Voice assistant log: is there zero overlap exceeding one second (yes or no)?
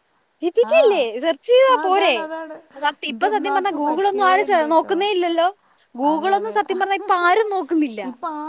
no